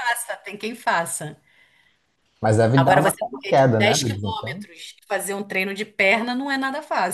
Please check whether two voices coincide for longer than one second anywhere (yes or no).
yes